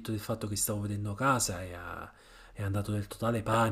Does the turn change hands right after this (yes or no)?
no